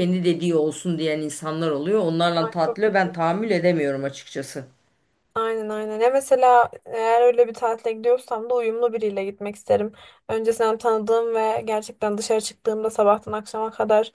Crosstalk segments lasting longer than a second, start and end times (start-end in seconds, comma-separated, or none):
none